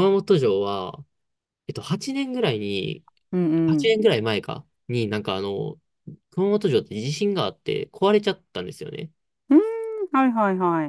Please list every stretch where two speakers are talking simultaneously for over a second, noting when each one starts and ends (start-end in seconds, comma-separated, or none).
none